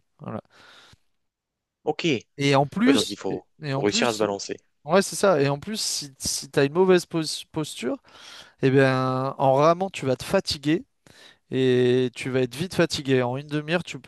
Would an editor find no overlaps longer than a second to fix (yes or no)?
no